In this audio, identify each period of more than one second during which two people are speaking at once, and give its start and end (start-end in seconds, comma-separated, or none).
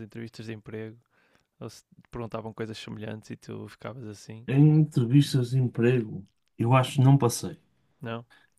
none